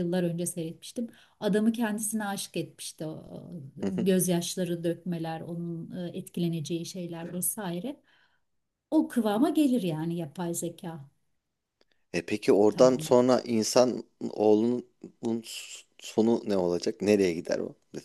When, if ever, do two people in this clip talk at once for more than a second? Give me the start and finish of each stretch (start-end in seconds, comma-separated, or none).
none